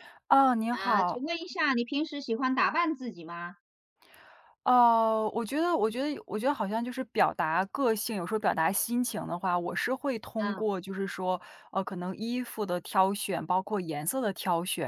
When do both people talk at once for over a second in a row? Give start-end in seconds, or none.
none